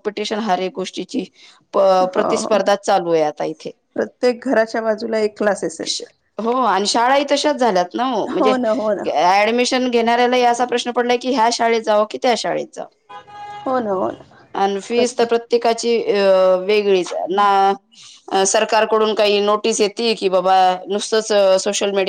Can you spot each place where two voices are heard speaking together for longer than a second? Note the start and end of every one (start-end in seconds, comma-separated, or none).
none